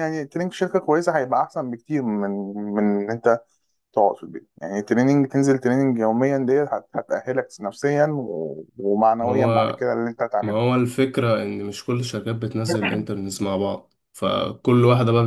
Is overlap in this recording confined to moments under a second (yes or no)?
yes